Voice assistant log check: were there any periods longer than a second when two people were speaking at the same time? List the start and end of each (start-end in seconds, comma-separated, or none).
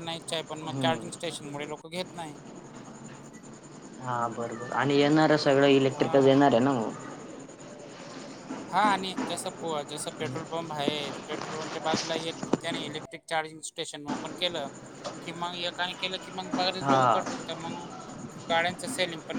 none